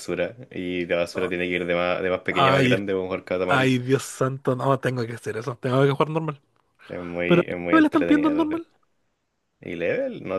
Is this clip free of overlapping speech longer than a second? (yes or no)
no